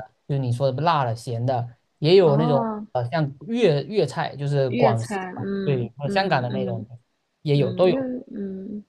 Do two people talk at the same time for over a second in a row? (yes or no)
yes